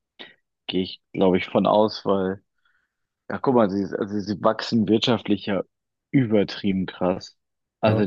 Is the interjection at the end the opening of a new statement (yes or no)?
no